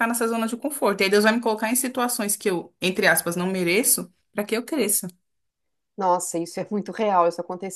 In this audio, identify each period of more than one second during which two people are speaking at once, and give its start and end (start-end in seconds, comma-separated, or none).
none